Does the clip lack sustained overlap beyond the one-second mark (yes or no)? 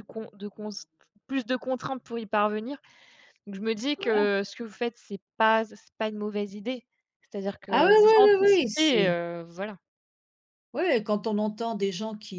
no